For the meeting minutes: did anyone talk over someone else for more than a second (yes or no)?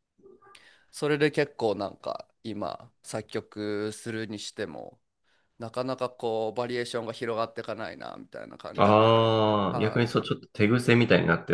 no